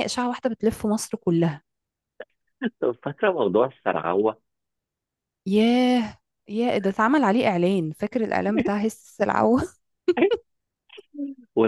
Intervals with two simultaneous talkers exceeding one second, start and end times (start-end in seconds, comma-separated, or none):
none